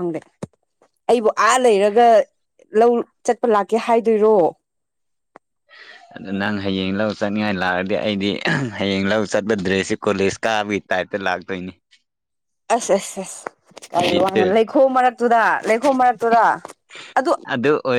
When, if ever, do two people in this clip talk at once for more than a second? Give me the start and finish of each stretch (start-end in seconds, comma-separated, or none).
none